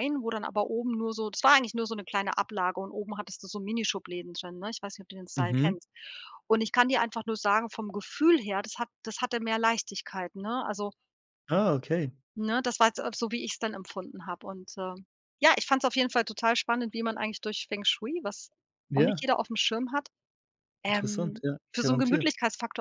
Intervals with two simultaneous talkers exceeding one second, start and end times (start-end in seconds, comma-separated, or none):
20.9-22.3